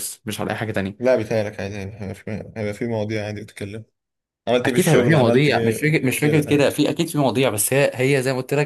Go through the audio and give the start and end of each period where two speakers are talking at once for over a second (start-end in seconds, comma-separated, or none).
4.6-6.7